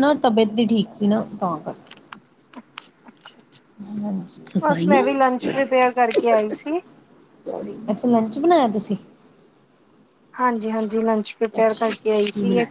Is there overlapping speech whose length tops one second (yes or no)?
no